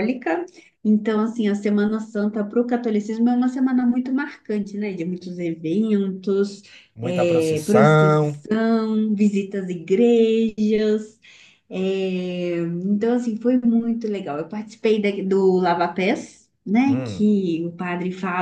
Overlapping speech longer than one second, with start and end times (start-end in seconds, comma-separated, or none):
7.0-8.3